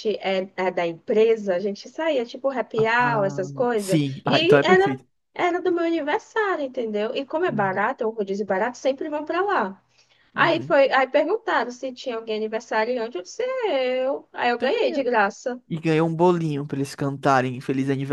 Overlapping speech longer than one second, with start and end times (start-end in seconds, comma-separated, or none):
3.0-5.0